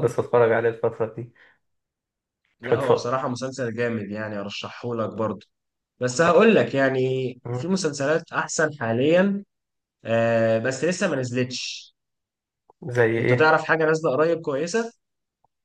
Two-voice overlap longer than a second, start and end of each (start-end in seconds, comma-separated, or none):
none